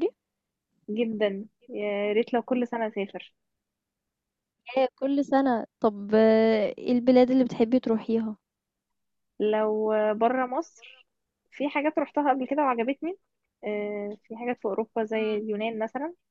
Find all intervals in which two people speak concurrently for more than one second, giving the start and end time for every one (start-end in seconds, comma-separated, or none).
none